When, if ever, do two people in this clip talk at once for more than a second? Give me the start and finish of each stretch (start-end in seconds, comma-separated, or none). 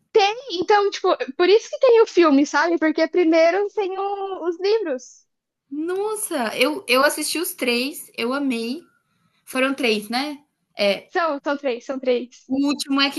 none